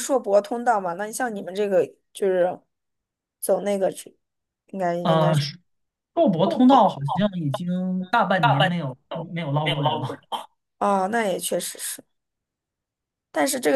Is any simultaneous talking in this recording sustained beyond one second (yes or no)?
yes